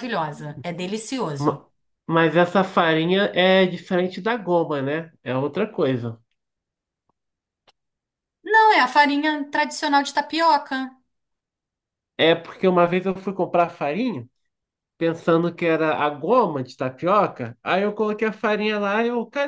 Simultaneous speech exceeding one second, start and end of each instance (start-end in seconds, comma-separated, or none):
none